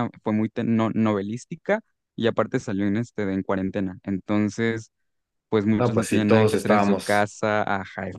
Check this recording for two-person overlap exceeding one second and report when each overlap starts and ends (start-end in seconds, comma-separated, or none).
5.8-7.3